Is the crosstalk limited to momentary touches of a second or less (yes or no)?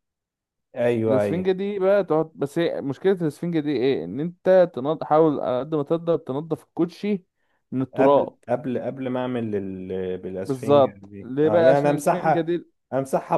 no